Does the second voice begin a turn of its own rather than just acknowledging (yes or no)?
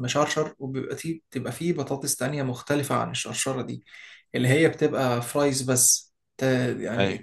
yes